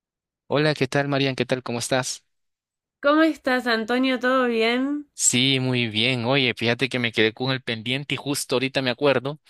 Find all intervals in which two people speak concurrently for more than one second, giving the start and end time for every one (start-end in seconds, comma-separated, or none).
none